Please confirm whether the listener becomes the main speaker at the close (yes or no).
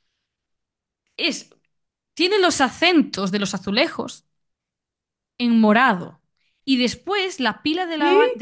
no